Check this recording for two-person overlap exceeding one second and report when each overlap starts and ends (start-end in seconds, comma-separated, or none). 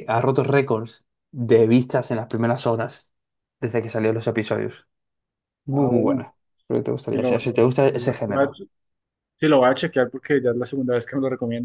7.1-8.5